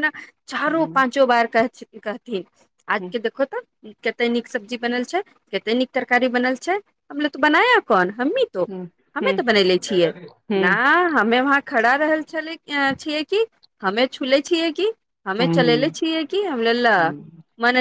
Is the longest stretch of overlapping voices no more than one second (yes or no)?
yes